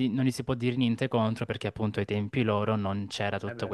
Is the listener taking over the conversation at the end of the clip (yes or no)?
no